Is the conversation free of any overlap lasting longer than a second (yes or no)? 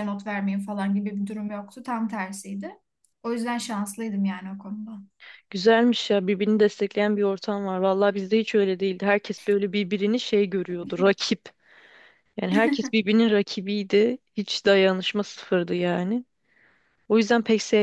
yes